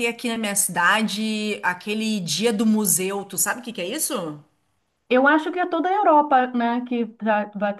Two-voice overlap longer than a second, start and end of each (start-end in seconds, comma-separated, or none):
none